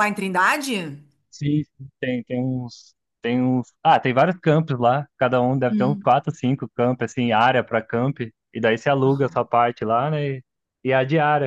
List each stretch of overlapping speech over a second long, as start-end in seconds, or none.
none